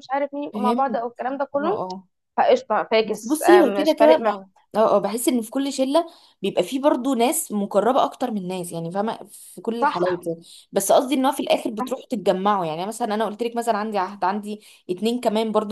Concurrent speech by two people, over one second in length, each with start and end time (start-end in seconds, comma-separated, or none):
3.0-4.4